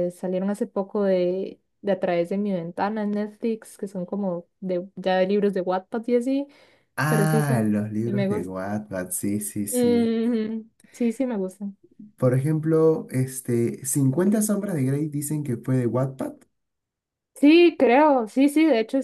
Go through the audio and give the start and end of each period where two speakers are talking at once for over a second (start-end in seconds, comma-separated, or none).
7.0-8.5